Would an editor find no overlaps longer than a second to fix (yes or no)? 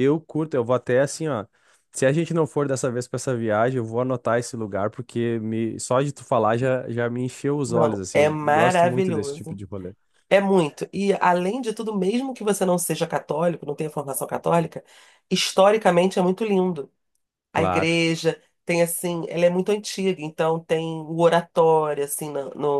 no